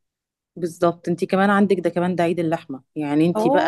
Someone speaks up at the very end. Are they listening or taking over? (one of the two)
listening